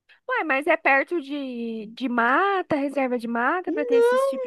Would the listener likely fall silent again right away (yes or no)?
no